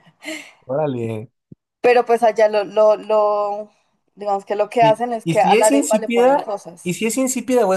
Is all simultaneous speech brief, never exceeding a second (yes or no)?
no